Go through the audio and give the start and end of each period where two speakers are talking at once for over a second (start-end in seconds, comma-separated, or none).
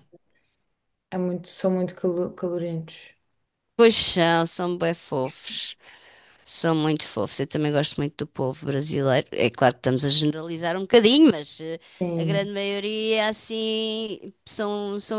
none